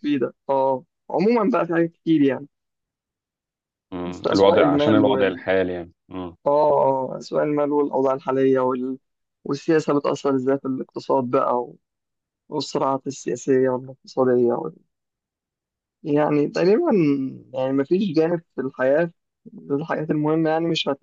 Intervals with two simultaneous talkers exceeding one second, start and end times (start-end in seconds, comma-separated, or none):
4.0-5.4